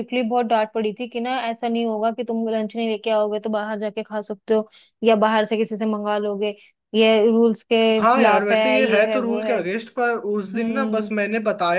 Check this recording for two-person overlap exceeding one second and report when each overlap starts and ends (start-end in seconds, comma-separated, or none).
8.0-9.6